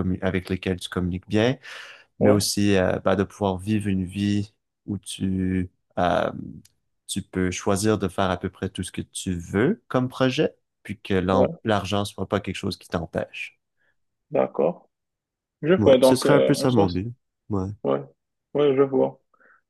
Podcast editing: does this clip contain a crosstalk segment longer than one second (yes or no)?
yes